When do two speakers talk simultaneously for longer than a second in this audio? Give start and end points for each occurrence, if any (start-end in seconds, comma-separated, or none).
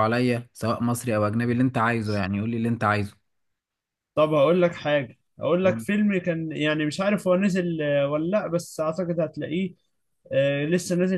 none